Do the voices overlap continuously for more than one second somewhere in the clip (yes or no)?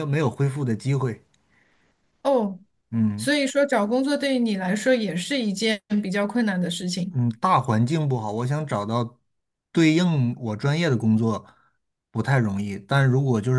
no